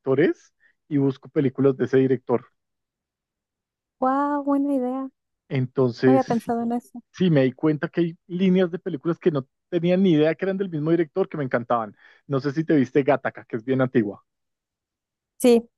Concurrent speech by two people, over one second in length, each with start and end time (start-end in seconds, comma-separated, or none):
none